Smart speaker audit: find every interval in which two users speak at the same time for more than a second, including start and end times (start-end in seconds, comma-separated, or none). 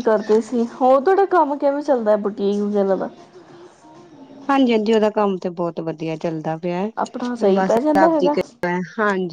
7.0-8.3